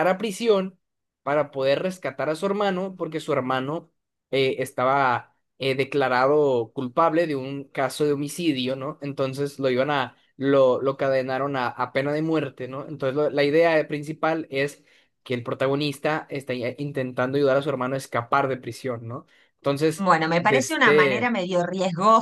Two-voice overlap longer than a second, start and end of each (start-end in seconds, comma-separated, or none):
20.0-21.3